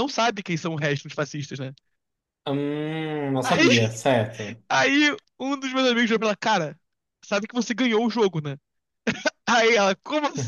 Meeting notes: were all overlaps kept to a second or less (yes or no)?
yes